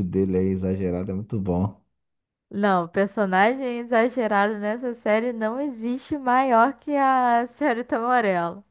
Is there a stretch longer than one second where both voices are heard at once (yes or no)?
no